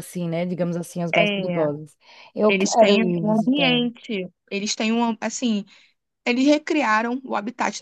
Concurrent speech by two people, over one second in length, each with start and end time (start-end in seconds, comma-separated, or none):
2.5-3.8